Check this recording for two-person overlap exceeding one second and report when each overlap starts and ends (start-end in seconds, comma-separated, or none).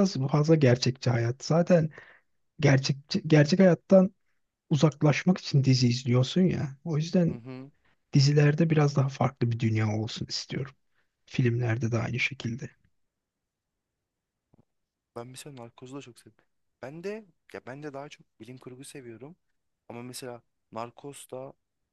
none